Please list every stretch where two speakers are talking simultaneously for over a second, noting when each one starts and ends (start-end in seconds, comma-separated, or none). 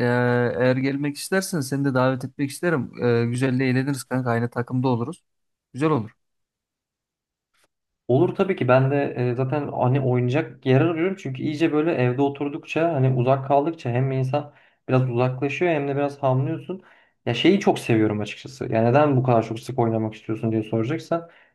none